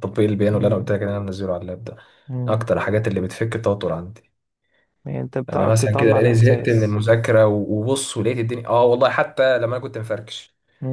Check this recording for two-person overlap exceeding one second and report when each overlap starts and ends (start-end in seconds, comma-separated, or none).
5.5-7.0